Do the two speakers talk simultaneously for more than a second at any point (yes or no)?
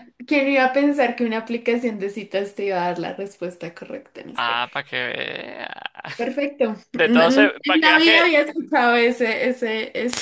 yes